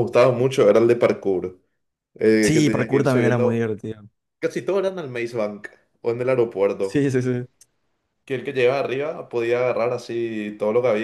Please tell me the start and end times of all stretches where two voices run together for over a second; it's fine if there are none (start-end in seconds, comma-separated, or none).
2.4-3.7